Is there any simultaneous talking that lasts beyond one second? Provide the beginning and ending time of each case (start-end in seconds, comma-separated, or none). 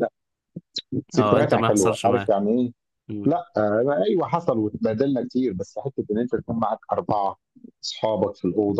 1.2-2.4